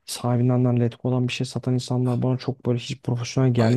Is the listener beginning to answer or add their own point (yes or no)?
yes